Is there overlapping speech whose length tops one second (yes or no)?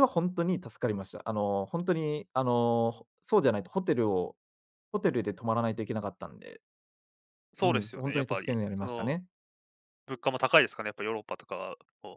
yes